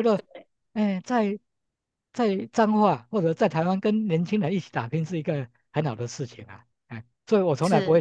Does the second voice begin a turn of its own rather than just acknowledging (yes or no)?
no